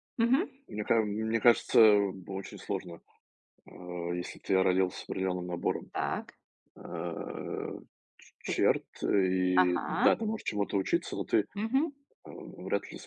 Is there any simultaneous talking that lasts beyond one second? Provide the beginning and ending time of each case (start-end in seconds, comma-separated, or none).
none